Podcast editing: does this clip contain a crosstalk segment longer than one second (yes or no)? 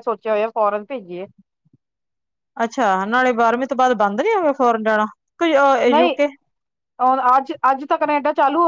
no